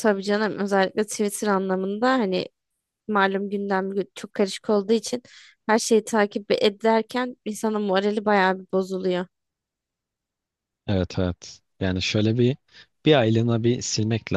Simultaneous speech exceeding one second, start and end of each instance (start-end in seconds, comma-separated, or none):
none